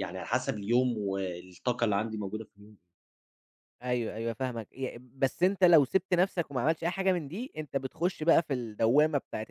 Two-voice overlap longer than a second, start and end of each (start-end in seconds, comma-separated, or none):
none